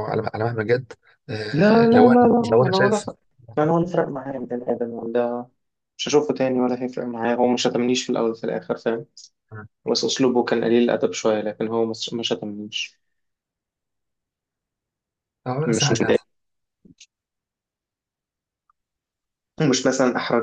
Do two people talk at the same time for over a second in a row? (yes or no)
yes